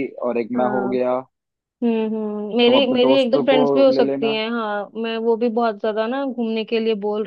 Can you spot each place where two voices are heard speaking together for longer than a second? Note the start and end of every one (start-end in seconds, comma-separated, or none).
2.7-4.4